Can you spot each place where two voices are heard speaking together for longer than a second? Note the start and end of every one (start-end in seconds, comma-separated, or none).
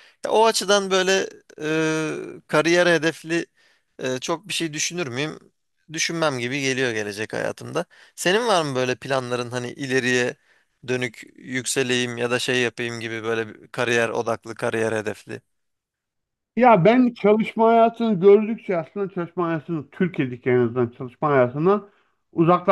none